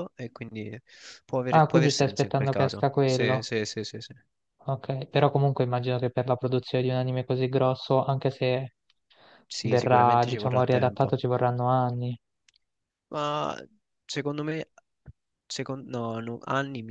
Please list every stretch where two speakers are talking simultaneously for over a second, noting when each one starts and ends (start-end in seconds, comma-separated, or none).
1.5-3.5, 9.6-11.1